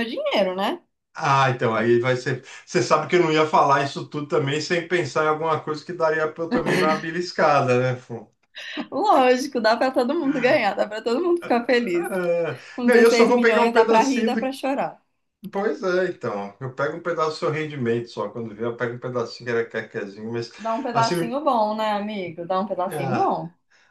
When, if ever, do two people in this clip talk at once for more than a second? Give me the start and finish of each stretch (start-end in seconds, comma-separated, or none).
12.7-14.5